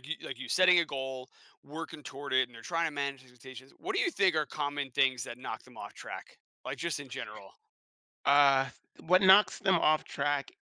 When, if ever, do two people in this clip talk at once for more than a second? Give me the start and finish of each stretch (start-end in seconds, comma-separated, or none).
none